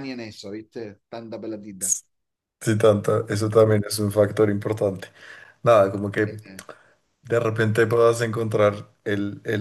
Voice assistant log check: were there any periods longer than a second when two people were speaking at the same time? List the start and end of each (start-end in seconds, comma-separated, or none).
none